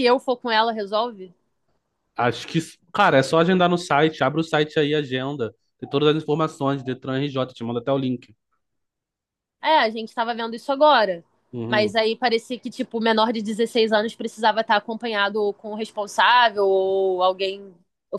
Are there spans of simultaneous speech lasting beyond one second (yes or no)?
no